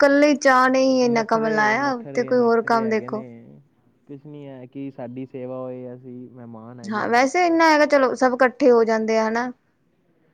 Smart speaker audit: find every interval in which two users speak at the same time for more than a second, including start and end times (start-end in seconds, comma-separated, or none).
none